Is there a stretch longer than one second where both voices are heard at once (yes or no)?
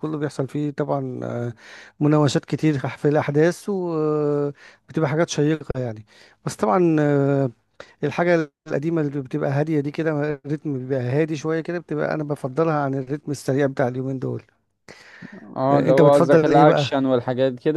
yes